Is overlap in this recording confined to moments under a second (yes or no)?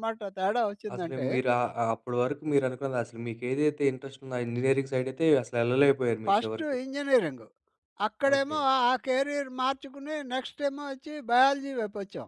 yes